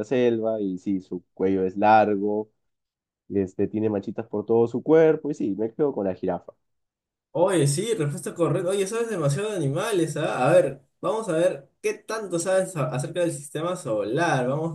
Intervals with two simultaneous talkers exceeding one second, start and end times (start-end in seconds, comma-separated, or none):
none